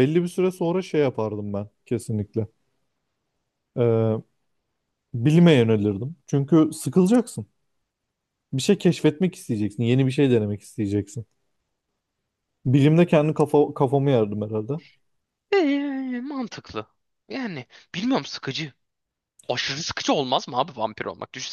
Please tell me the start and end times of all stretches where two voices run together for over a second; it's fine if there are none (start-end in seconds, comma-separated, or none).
none